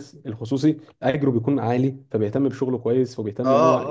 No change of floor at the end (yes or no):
no